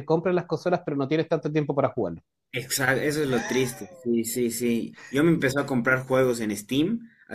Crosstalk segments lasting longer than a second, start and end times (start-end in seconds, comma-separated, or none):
none